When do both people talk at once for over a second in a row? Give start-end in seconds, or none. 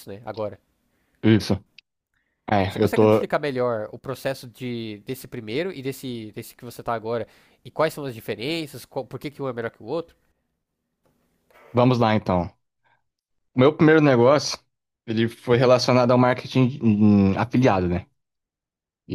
none